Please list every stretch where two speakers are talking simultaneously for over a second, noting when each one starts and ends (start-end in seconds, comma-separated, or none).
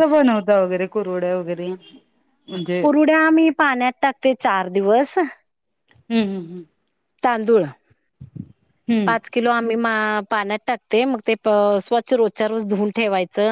none